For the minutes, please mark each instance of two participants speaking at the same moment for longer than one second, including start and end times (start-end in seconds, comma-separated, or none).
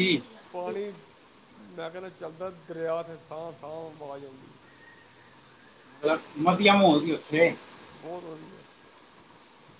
none